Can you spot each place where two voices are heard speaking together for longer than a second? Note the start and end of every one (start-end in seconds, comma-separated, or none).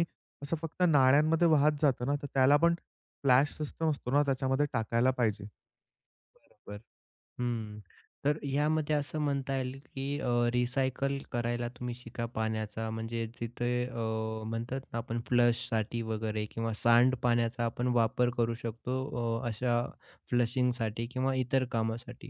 none